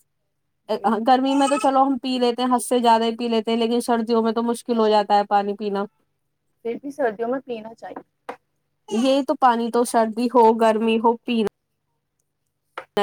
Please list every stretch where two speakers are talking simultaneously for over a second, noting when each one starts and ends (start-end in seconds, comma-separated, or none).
none